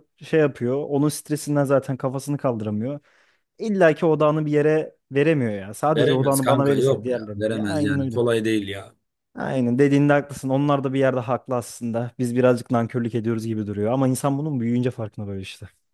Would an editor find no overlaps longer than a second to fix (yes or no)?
no